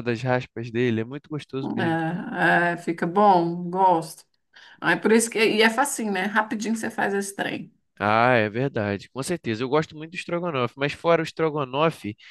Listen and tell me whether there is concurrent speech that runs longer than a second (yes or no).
no